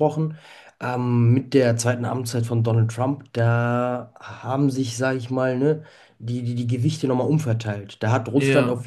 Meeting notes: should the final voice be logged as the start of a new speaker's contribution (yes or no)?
no